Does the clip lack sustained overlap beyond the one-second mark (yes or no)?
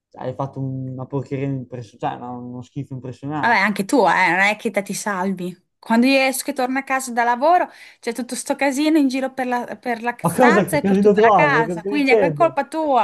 no